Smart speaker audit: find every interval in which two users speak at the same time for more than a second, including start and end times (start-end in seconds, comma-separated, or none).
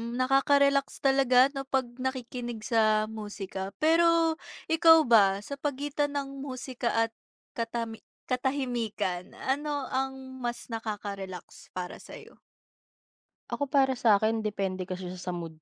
none